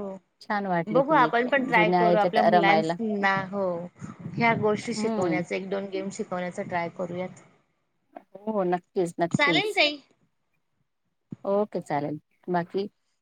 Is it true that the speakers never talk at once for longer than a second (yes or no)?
no